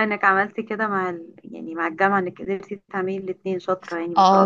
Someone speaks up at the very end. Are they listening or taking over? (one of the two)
taking over